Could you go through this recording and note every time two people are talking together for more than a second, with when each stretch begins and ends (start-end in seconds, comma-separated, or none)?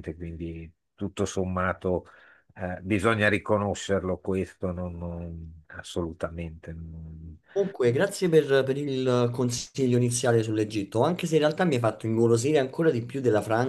none